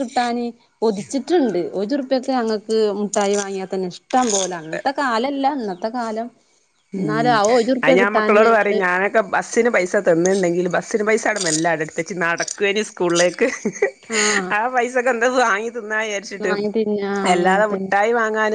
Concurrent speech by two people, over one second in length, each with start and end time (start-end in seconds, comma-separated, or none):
none